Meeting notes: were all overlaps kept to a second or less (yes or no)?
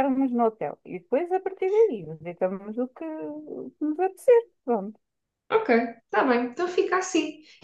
yes